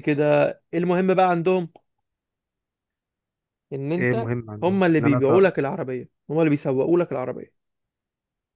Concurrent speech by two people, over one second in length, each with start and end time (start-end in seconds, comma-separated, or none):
4.0-5.5